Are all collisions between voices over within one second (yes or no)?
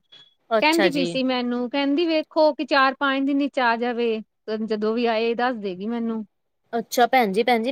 yes